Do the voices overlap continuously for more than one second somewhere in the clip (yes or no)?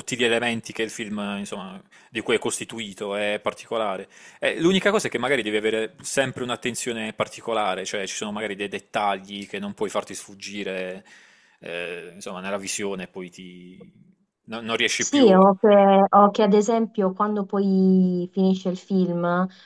no